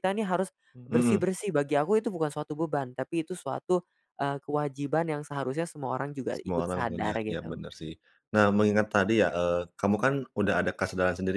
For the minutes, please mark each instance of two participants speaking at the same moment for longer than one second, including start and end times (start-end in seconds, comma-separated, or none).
6.3-7.6